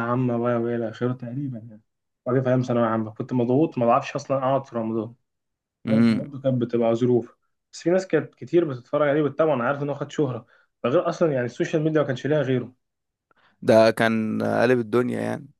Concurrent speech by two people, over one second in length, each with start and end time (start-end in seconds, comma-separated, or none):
none